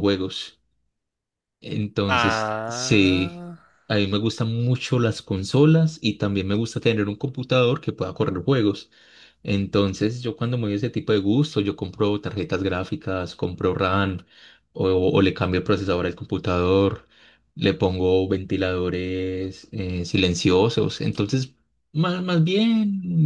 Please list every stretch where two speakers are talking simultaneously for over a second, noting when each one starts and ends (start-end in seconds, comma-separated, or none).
2.1-3.5